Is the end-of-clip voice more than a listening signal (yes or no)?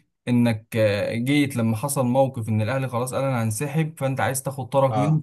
no